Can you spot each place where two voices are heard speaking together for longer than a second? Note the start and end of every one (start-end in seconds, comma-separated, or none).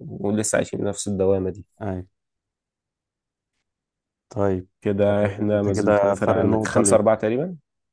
5.1-7.2